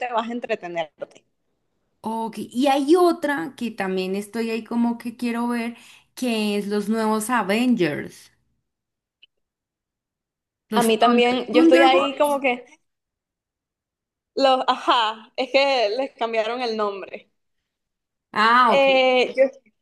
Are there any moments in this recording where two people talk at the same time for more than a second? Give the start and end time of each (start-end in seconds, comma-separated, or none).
10.7-12.4